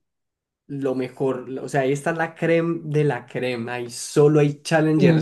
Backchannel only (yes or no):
yes